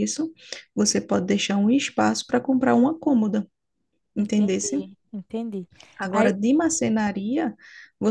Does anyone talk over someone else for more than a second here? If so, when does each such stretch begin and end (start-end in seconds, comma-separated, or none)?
none